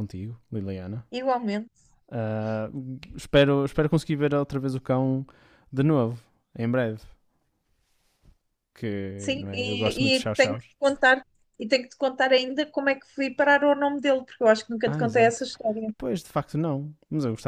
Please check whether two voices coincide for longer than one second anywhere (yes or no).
yes